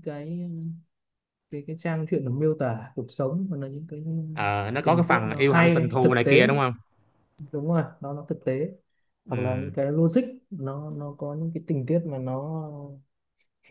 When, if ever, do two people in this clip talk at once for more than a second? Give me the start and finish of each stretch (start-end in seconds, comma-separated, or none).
4.8-6.4